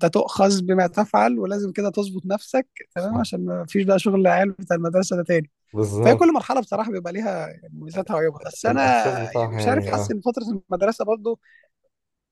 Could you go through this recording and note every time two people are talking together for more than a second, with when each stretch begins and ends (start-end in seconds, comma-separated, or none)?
8.7-10.2